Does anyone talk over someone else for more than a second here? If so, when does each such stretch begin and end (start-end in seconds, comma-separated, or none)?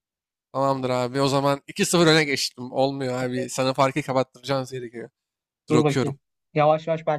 none